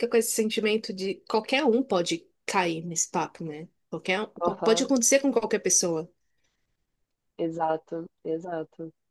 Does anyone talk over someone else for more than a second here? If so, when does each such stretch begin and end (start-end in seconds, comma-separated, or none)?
none